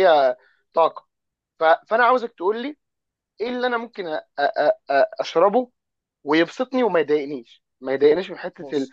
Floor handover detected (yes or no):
no